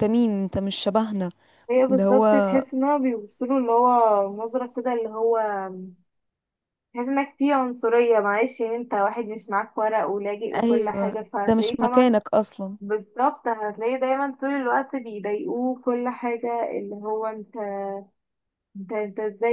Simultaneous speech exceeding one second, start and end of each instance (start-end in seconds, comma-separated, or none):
10.5-12.1